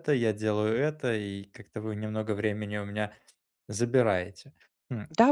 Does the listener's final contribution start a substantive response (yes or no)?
yes